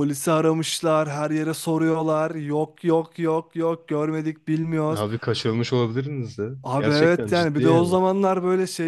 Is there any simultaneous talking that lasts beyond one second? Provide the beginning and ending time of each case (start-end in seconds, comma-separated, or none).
6.6-8.0